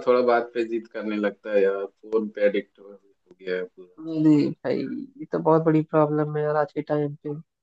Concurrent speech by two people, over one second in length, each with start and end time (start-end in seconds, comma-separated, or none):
none